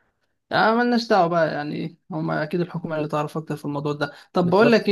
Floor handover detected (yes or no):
no